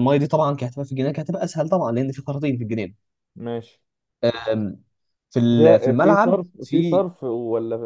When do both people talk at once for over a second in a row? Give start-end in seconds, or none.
5.6-7.1